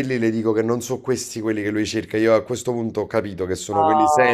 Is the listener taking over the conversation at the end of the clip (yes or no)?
yes